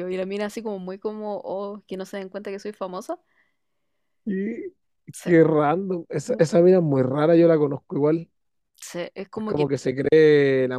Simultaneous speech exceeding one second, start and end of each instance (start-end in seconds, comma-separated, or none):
none